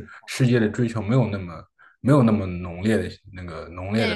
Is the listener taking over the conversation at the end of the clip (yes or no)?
yes